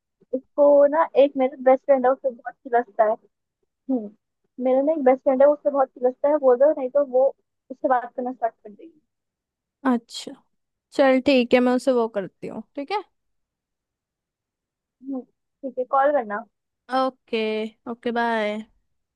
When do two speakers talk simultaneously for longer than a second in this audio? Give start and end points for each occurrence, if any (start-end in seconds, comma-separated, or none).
none